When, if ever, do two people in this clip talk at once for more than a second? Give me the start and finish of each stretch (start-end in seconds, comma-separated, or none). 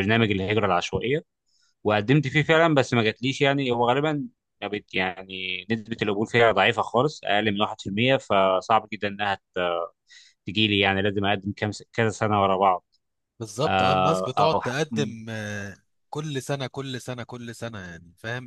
13.7-15.1